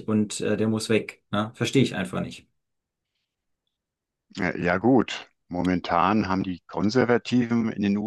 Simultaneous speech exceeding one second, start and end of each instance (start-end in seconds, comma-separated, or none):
none